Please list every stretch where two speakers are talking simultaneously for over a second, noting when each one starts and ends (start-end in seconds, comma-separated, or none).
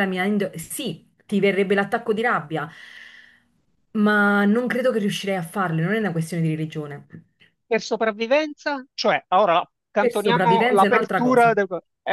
10.0-11.6